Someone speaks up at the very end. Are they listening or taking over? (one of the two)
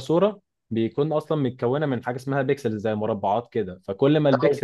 listening